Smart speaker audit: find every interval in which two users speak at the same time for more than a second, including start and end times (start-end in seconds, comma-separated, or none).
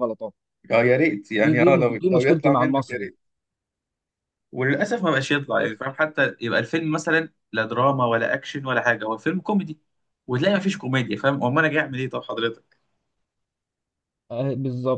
1.4-3.1